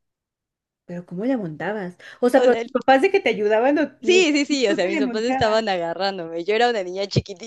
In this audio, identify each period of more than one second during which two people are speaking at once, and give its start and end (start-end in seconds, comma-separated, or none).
4.0-5.6